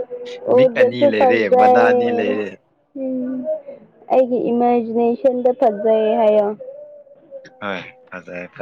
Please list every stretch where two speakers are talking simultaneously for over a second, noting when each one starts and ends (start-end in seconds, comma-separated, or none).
0.6-2.4